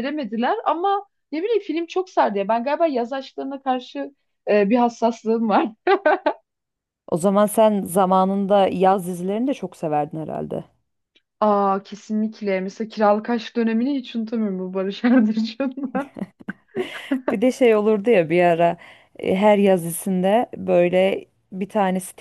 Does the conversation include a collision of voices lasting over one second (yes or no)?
no